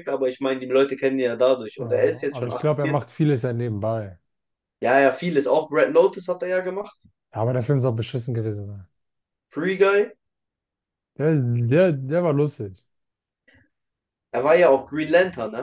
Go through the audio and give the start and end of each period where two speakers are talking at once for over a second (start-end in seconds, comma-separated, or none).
1.8-3.1